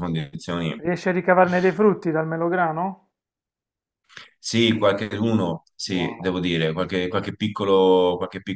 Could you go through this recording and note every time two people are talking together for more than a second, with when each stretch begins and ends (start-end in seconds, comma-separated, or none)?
none